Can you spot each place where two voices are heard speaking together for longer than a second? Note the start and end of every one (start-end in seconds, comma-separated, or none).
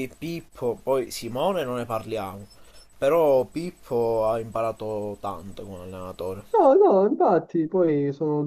none